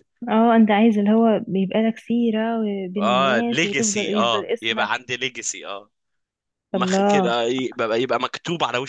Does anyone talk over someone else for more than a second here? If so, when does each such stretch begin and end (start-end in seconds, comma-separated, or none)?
3.0-4.9